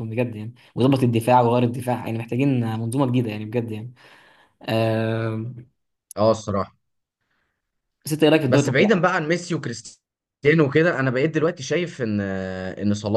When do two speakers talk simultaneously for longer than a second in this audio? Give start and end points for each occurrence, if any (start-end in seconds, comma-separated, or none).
none